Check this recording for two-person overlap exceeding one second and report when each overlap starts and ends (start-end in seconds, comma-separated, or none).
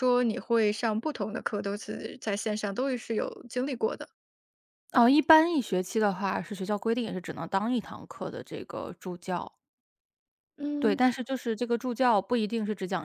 none